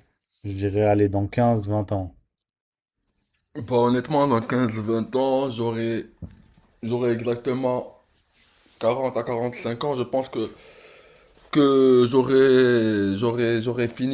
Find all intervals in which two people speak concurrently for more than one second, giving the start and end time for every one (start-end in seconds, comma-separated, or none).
none